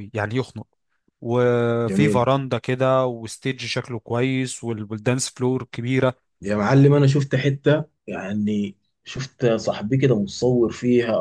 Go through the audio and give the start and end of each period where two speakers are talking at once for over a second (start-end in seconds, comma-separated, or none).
none